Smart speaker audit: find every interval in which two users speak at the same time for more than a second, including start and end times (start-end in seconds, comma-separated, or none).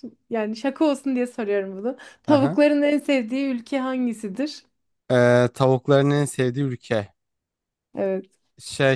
none